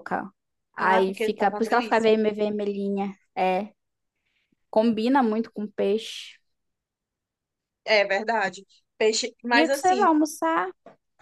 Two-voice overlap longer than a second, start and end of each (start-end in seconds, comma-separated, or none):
0.8-2.1